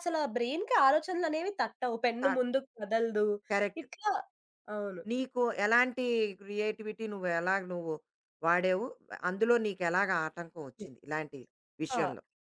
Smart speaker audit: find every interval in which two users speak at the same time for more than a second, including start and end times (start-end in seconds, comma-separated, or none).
none